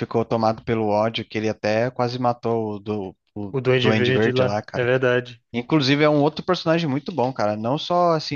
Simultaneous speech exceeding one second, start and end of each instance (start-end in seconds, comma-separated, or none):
3.5-4.9